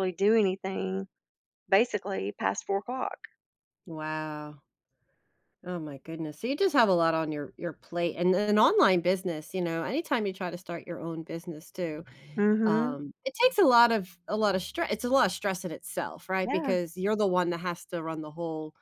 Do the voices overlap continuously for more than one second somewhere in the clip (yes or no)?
no